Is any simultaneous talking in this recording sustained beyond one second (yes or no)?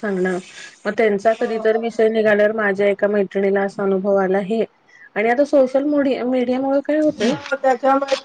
yes